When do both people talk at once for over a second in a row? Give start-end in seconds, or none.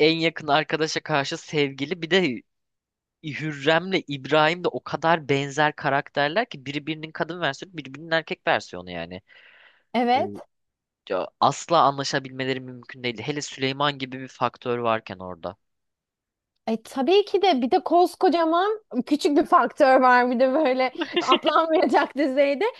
none